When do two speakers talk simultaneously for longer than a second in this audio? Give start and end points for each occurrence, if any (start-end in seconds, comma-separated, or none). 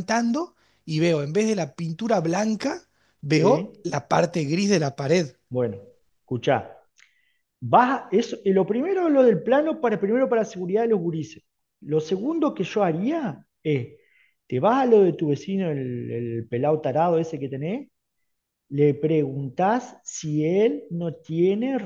none